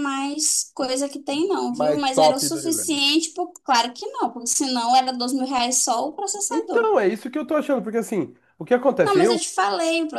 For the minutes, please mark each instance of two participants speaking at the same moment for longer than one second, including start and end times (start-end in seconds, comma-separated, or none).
1.7-3.0